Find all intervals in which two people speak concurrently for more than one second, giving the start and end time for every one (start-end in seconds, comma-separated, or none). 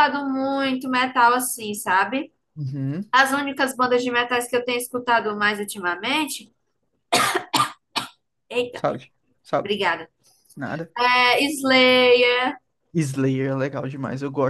none